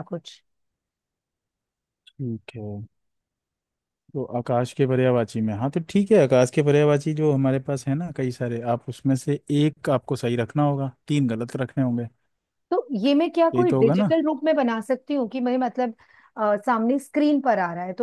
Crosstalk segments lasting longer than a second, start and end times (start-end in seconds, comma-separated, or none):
none